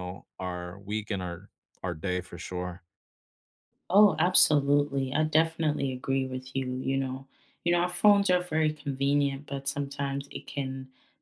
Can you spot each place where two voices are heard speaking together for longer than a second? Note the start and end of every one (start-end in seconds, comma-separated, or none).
none